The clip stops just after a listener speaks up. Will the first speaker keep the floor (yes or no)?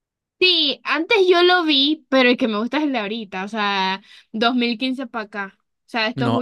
no